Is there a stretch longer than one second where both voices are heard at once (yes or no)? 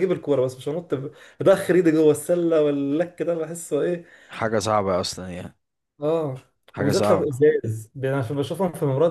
no